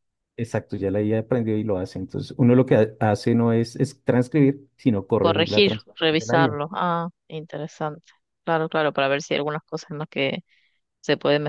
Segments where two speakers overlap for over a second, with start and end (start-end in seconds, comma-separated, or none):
5.2-6.6